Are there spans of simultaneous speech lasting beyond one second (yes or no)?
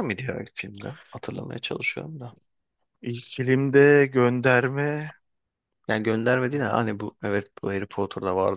no